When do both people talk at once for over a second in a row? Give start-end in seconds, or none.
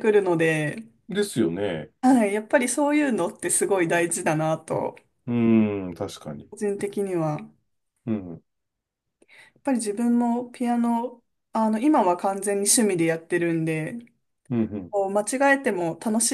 none